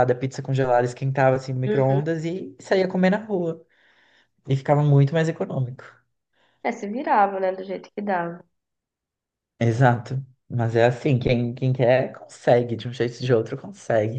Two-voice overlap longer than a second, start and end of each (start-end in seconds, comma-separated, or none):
none